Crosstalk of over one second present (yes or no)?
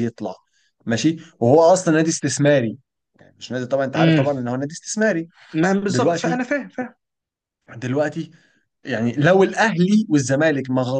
no